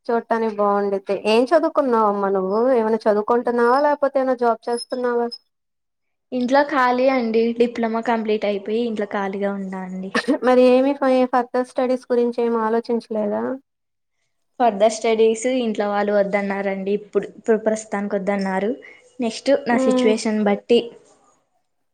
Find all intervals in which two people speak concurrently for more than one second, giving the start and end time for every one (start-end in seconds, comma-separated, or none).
none